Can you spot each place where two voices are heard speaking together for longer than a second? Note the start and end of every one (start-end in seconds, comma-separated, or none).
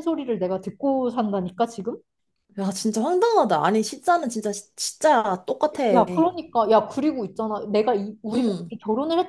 none